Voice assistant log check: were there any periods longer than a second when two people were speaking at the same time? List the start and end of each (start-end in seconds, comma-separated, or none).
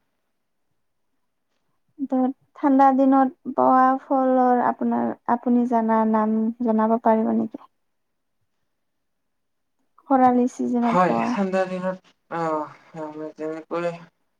none